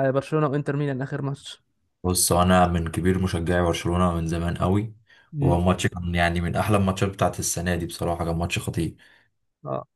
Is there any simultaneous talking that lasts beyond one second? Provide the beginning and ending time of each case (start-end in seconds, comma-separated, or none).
none